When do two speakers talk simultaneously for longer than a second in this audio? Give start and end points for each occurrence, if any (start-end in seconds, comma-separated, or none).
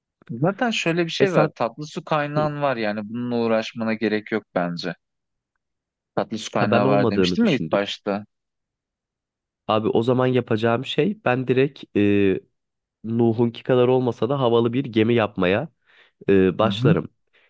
6.5-7.8